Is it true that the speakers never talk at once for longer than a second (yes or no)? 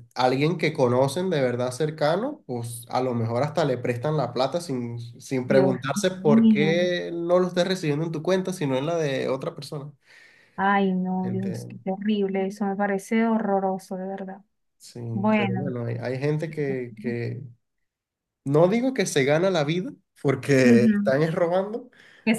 no